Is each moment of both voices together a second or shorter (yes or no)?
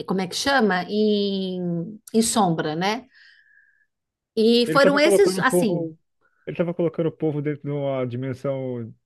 no